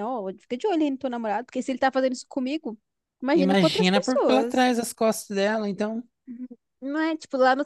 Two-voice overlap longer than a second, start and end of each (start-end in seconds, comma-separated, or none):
3.3-4.7